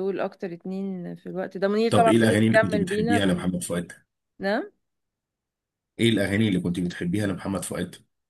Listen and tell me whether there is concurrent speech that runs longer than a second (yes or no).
yes